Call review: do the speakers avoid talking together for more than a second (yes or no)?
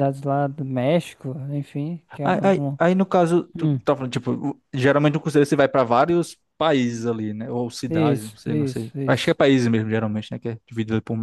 no